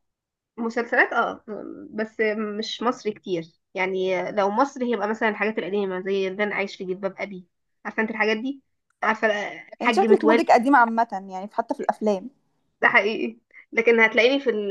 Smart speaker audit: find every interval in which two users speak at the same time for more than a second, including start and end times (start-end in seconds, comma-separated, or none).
none